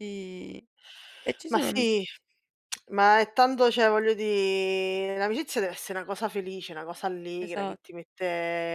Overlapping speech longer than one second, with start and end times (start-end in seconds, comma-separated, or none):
none